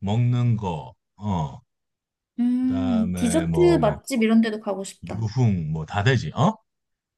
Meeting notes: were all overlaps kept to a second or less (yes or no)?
no